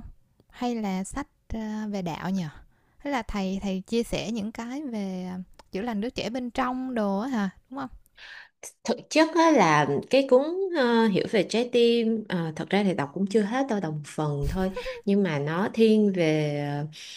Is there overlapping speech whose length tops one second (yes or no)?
no